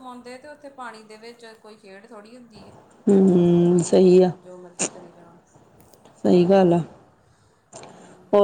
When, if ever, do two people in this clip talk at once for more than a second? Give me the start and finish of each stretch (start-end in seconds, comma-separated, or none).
none